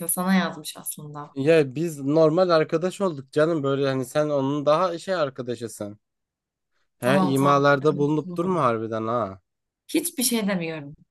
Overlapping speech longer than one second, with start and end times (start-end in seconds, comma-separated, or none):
7.0-8.8